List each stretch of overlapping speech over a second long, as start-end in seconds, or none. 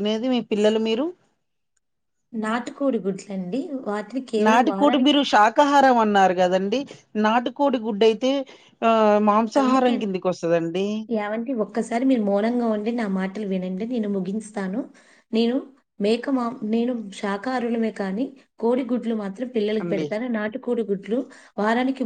none